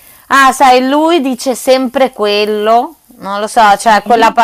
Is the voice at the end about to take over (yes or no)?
no